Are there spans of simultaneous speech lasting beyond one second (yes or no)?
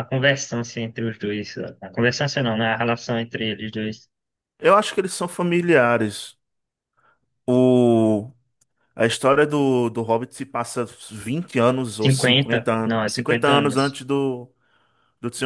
yes